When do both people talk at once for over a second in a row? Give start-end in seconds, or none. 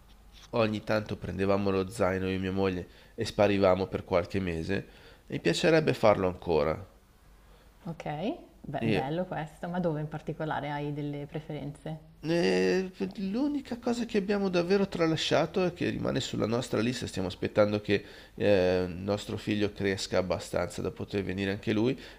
none